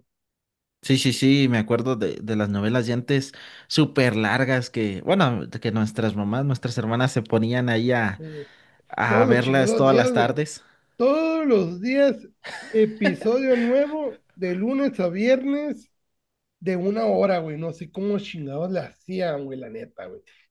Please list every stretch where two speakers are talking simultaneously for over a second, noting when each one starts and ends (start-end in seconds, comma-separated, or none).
9.1-10.4